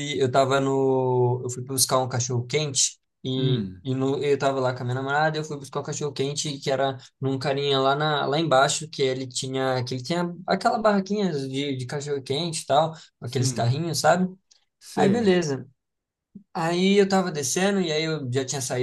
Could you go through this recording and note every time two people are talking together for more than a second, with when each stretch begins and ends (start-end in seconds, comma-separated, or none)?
none